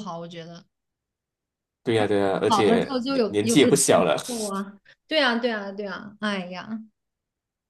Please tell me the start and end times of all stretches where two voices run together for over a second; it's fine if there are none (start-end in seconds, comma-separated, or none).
2.5-4.2